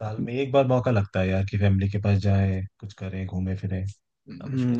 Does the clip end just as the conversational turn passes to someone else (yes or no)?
yes